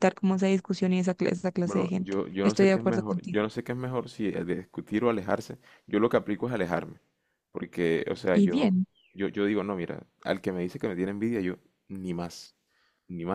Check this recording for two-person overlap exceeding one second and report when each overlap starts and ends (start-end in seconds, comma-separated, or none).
1.6-3.4